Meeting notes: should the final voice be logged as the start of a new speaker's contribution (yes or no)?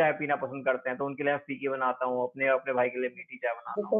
yes